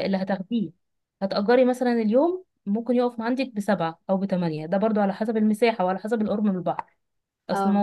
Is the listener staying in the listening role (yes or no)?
yes